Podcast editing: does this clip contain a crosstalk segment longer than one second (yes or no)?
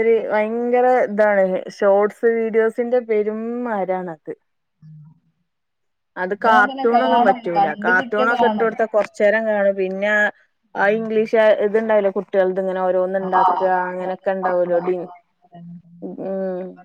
yes